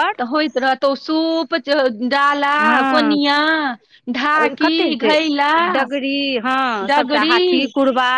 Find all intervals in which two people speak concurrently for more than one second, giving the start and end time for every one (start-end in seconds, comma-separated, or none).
none